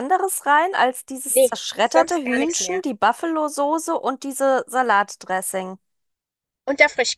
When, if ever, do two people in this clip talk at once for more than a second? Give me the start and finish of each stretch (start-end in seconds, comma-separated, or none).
1.3-2.8